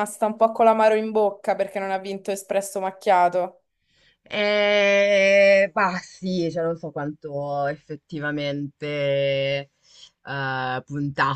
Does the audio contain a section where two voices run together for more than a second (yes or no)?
no